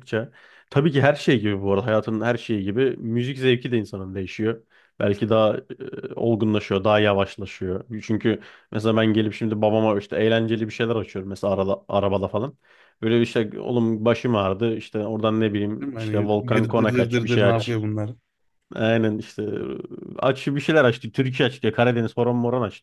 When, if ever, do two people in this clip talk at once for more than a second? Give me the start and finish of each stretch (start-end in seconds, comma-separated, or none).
15.8-17.8